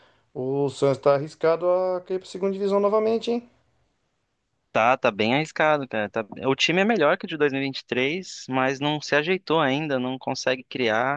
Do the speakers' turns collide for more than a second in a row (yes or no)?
no